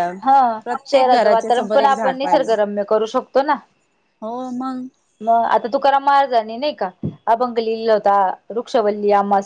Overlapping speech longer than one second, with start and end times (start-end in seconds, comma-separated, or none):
0.9-2.5